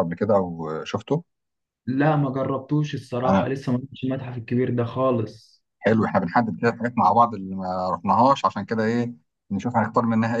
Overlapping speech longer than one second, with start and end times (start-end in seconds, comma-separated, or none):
none